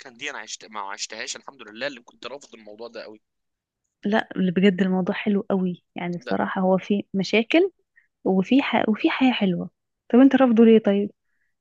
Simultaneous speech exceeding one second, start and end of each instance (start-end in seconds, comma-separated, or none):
none